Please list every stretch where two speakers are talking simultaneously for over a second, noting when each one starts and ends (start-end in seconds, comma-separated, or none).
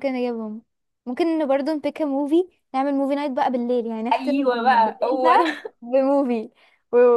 4.1-5.8